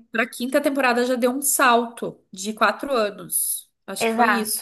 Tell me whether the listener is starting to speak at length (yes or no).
yes